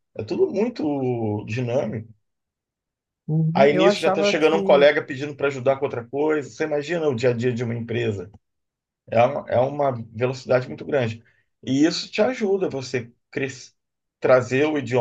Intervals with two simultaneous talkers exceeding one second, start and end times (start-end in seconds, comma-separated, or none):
3.5-4.9